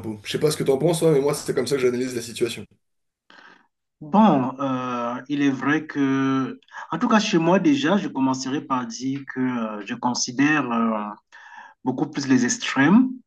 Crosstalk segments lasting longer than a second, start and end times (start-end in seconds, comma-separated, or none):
none